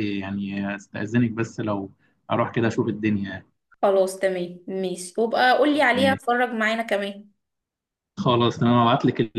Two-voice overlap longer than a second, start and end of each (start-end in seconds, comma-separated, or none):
none